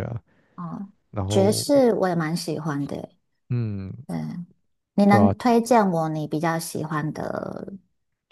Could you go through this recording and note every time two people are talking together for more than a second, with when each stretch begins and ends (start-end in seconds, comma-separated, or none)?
none